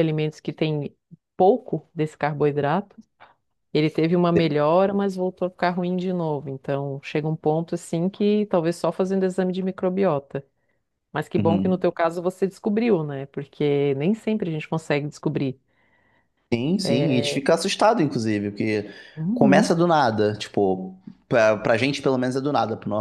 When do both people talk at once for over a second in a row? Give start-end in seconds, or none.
none